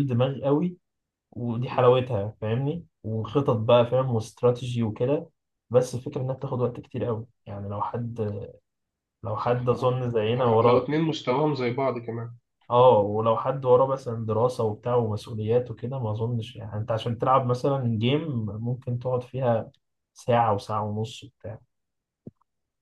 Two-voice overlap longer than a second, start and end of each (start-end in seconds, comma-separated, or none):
9.4-10.9